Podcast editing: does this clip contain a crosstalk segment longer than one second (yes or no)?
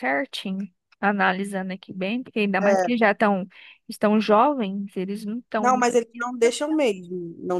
no